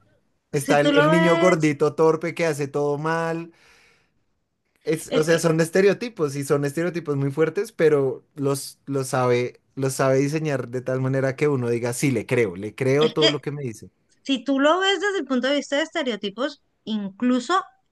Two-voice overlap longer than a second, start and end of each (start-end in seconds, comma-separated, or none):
0.5-1.8